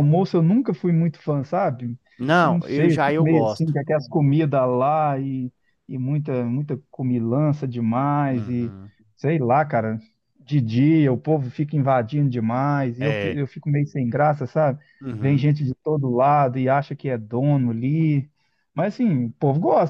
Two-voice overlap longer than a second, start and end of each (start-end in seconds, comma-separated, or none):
2.4-3.7